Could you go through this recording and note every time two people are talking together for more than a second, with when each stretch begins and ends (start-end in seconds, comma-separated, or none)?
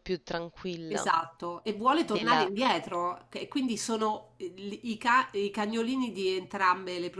none